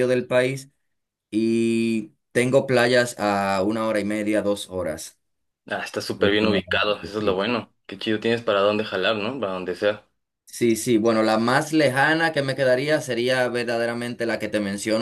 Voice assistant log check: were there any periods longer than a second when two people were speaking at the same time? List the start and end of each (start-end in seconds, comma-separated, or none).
6.2-7.5